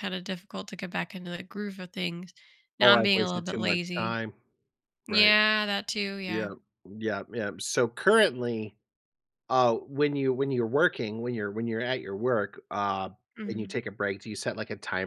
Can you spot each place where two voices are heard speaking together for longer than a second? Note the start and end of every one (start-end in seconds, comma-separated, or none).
2.8-4.2